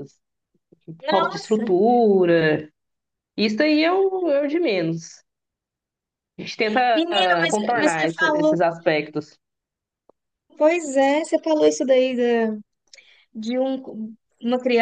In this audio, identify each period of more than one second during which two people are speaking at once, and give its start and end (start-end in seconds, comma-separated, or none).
6.9-8.6